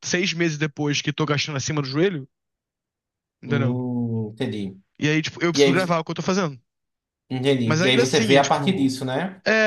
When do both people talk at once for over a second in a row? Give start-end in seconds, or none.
7.6-8.9